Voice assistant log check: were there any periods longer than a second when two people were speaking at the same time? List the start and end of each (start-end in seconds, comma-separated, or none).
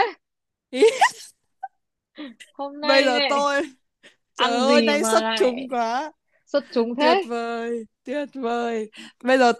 4.3-5.7